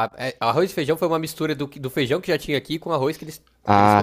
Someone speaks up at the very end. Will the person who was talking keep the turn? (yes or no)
no